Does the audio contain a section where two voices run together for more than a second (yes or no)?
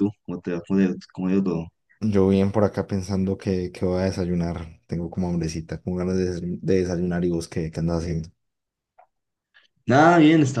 no